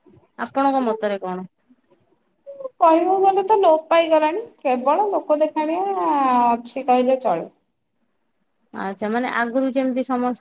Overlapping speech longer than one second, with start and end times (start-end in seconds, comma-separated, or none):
none